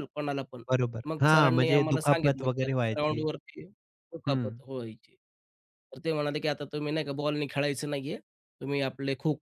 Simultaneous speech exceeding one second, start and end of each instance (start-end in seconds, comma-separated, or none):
1.1-3.2